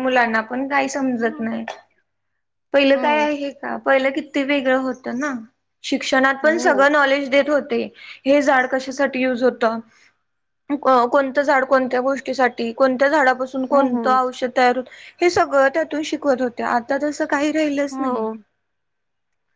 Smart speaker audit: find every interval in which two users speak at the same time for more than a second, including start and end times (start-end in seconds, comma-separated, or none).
none